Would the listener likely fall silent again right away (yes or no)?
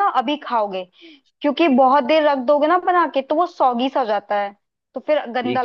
no